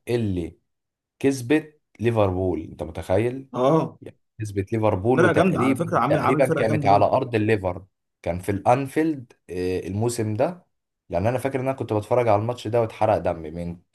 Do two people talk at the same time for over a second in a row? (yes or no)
yes